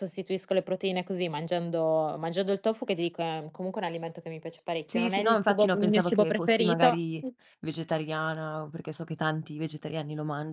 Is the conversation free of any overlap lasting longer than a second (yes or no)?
no